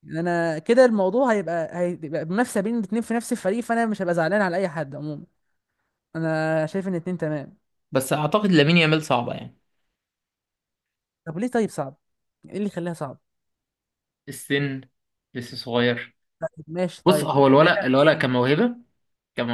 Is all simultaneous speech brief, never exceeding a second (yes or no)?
no